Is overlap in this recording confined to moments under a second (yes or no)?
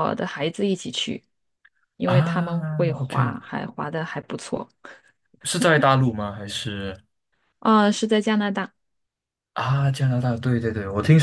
no